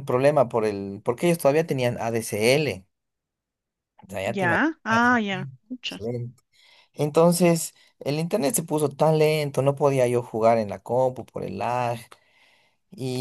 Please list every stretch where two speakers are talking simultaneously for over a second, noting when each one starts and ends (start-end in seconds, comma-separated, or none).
4.2-6.0